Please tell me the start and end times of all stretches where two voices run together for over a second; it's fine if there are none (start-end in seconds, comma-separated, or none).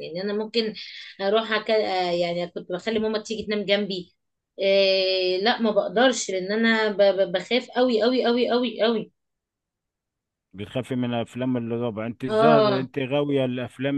none